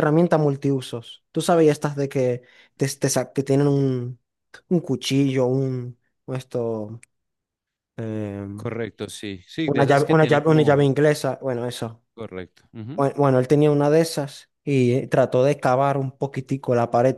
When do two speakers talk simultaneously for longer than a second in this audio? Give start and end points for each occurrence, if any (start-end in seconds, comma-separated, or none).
9.7-10.9